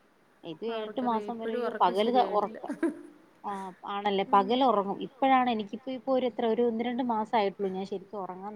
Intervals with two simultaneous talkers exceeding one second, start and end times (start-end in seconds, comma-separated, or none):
0.8-2.6